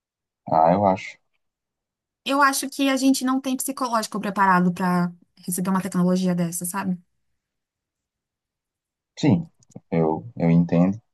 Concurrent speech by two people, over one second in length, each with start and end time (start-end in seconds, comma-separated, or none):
none